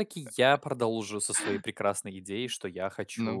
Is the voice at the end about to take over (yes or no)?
no